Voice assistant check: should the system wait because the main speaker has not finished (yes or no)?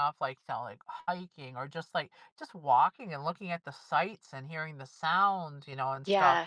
no